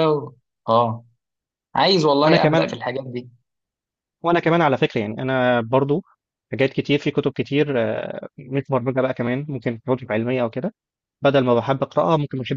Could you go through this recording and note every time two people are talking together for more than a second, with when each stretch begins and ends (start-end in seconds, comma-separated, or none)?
none